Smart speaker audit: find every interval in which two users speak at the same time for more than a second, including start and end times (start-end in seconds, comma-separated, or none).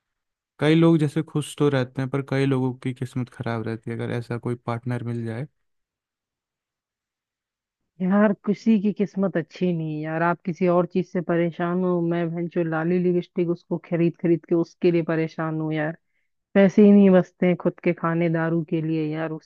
none